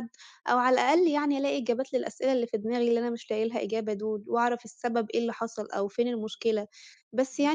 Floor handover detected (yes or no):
no